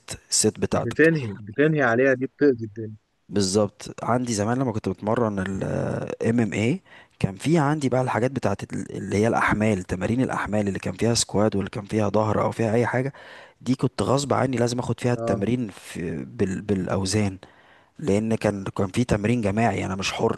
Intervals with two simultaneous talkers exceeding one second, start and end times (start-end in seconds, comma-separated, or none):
none